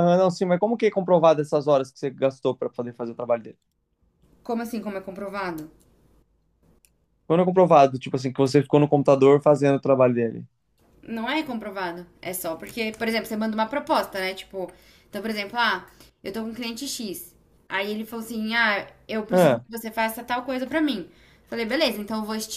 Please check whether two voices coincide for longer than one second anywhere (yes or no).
no